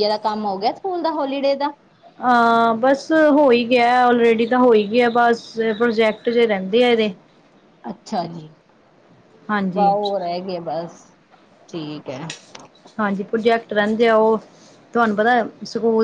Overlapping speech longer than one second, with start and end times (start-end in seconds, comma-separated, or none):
none